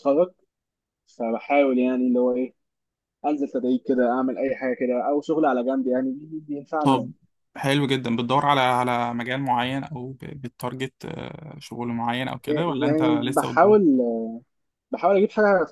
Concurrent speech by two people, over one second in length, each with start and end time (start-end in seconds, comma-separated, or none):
12.5-13.8